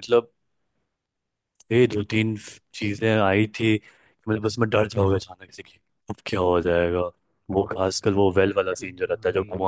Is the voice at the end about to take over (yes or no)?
no